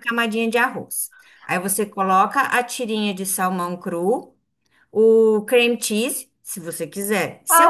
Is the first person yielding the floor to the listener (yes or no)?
yes